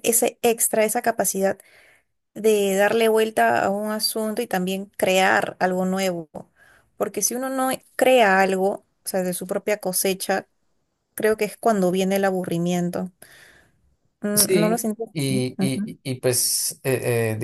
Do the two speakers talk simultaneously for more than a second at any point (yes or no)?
yes